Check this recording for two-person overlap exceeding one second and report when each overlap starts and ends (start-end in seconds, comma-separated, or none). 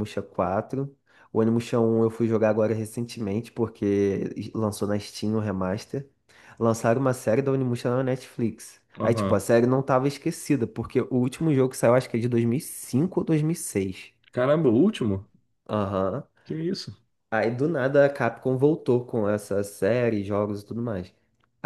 none